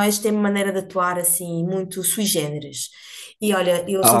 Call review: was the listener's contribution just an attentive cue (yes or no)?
yes